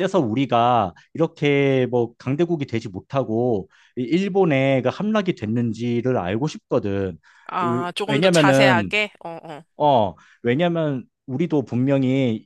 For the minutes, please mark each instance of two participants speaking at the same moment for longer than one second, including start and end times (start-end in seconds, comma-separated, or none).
7.6-8.9